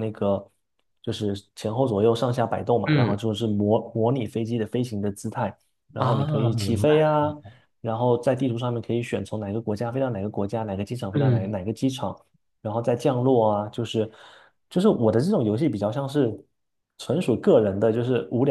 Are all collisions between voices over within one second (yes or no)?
no